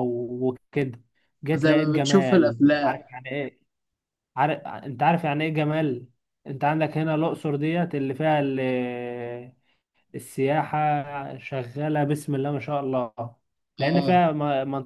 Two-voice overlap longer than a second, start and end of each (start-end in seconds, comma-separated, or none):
1.5-3.0